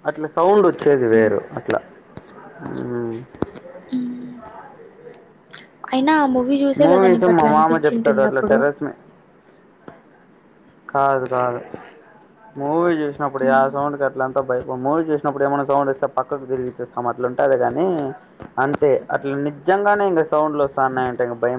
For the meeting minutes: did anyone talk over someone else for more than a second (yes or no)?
yes